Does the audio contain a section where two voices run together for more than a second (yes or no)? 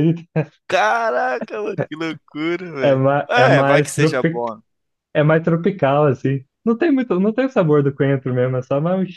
yes